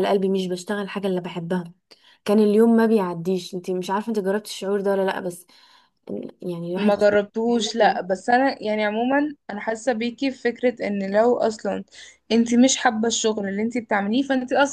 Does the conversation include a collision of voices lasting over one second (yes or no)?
yes